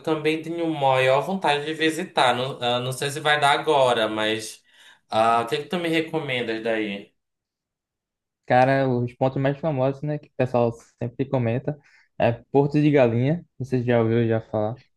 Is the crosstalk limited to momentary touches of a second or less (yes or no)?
yes